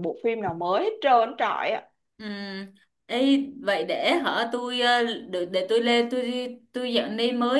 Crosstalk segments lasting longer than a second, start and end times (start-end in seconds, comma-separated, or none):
none